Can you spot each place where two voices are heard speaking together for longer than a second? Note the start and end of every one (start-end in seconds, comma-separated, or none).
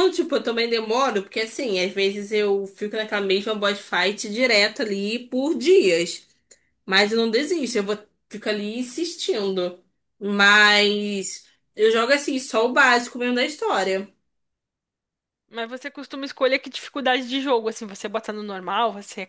none